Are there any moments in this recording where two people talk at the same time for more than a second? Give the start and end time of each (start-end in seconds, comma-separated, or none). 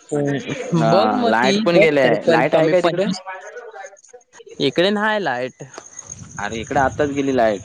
0.8-3.0